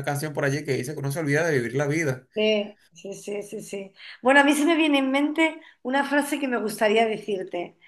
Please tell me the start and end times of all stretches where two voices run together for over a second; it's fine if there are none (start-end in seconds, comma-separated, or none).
none